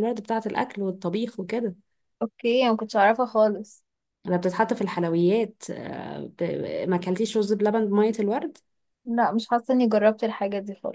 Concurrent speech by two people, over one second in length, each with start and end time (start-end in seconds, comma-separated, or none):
none